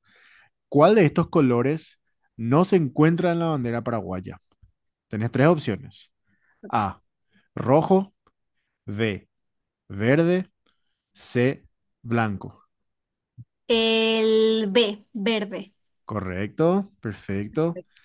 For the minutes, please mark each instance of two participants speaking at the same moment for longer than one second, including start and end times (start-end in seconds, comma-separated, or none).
none